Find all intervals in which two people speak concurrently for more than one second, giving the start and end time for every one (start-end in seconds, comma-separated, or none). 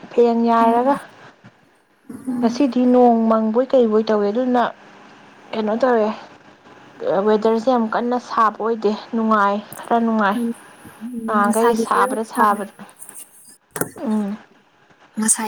11.2-12.6